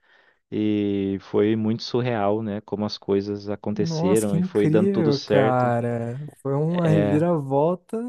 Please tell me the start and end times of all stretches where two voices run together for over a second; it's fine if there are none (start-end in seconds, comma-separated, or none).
3.8-5.7